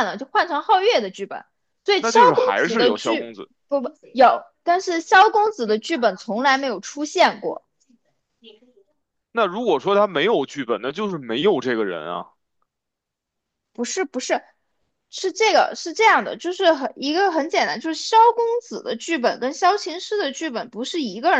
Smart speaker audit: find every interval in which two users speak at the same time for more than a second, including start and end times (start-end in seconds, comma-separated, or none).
2.0-3.3